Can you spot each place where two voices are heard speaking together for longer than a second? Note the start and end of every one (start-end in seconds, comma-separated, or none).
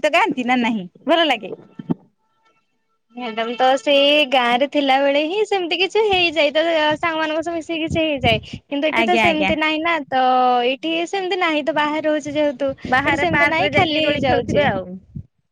13.1-14.6